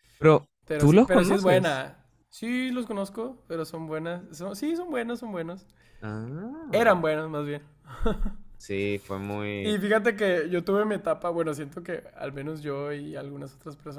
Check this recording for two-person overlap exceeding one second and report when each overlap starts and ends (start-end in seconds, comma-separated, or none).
0.7-1.9